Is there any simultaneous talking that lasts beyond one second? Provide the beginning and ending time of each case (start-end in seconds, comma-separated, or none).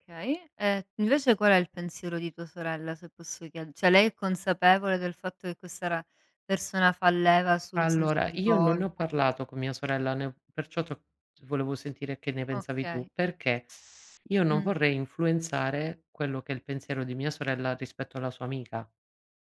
7.8-9.0